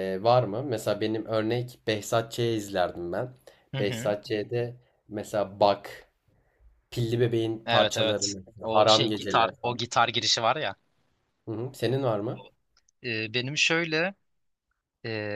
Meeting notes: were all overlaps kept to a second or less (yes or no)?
no